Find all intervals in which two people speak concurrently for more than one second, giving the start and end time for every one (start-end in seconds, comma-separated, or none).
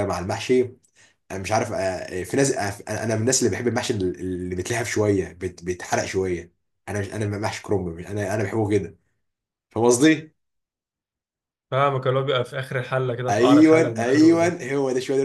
13.3-14.6